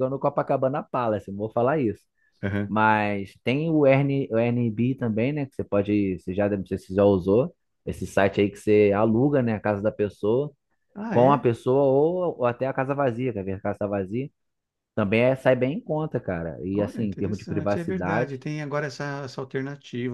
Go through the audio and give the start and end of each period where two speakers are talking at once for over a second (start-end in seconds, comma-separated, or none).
16.7-18.4